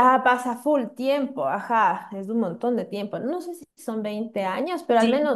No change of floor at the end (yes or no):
yes